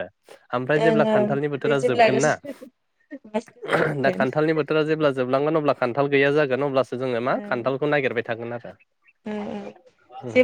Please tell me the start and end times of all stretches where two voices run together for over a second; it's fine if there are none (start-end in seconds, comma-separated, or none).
0.8-2.3